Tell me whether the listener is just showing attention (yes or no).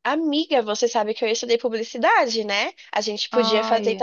yes